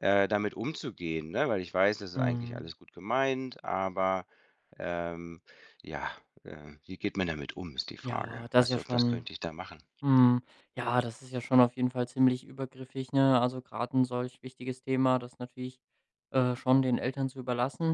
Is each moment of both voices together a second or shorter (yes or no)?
no